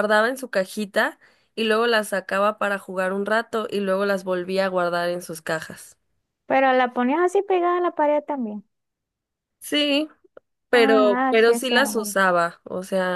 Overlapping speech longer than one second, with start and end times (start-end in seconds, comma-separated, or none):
10.7-12.2